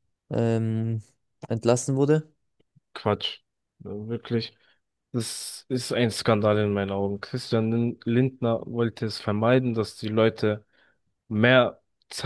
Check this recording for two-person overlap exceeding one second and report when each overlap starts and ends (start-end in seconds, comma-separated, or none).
none